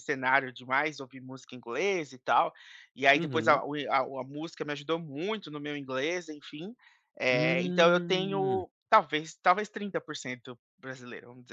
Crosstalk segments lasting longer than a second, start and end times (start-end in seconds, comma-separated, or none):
7.3-8.6